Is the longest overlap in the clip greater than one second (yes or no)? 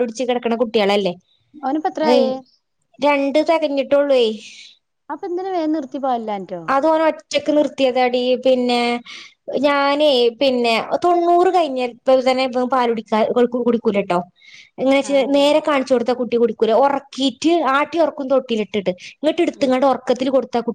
no